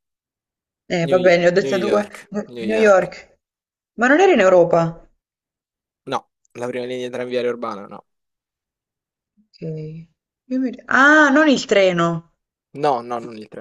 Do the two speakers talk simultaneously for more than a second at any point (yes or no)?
yes